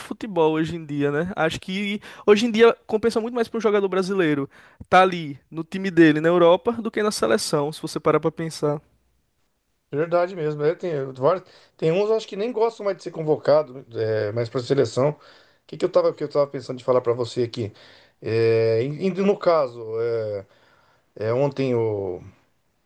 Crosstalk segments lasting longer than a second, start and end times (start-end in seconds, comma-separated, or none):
none